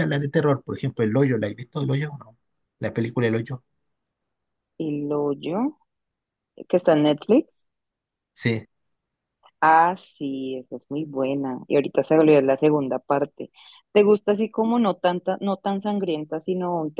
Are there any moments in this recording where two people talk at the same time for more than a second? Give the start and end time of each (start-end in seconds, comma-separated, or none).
none